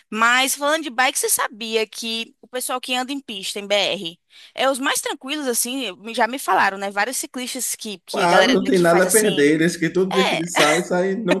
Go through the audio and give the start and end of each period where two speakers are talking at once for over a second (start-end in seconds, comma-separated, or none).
8.1-9.5